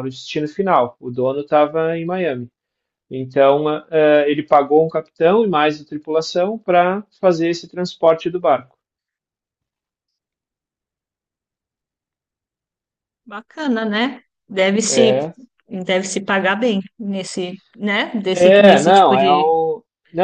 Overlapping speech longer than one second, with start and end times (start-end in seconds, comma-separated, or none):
18.3-19.5